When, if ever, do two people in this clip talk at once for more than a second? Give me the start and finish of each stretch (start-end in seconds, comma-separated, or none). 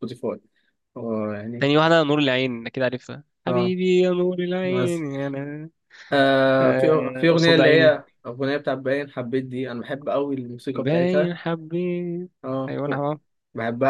6.6-8.0